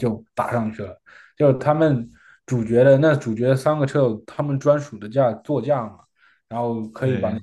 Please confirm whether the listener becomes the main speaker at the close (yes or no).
no